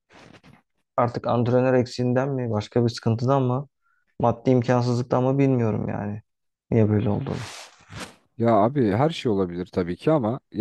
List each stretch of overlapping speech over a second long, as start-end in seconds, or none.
none